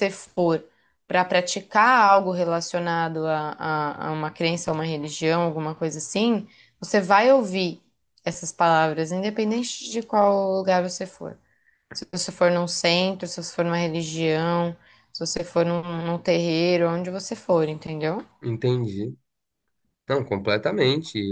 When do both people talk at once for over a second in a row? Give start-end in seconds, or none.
none